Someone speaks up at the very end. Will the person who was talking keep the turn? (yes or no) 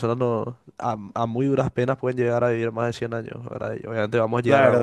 no